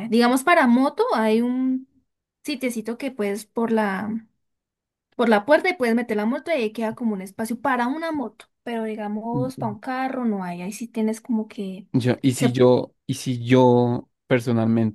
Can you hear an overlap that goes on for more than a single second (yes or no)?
no